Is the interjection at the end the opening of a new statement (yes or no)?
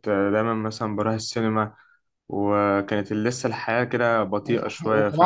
yes